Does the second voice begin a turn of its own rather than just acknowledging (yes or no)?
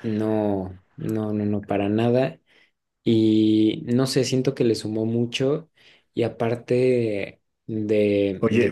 yes